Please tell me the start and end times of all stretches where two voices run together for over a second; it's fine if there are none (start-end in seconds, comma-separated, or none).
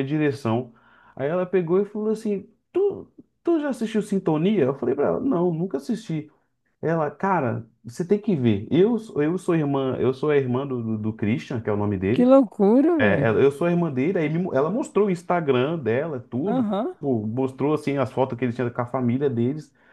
none